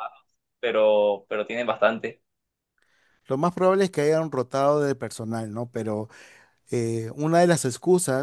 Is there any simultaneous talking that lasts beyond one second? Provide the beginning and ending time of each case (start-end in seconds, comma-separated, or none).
none